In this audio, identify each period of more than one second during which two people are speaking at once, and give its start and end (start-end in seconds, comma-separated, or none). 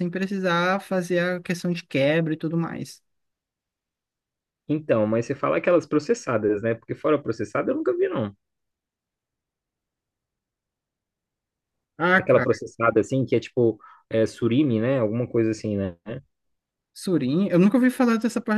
none